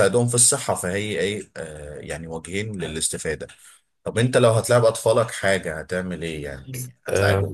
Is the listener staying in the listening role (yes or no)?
no